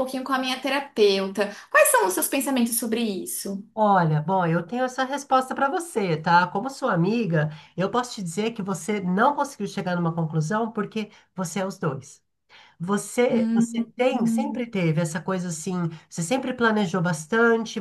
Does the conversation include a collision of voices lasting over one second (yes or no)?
yes